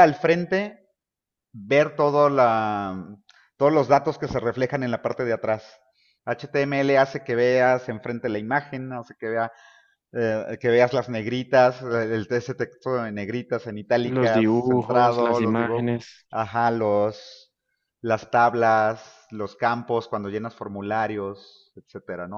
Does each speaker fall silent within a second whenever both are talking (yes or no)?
no